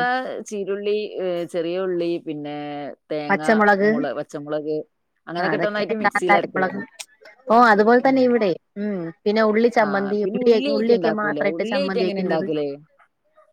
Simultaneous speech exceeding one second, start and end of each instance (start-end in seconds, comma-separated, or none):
9.8-12.4